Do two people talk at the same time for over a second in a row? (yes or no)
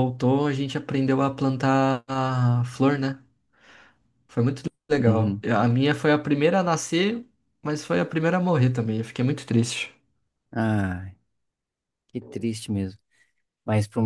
no